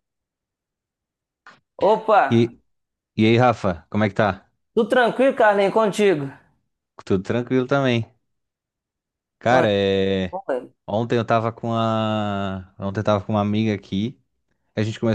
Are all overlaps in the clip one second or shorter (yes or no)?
yes